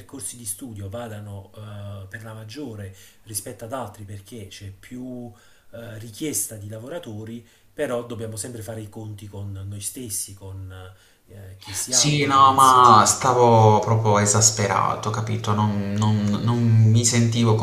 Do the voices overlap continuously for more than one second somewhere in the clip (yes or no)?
yes